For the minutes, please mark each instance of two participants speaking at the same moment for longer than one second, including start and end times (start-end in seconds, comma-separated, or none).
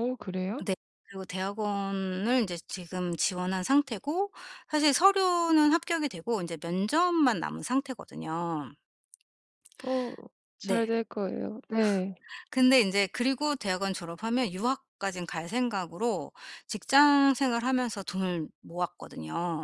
none